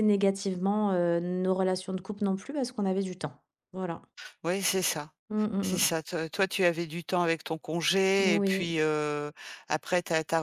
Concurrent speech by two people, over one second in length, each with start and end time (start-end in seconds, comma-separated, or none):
none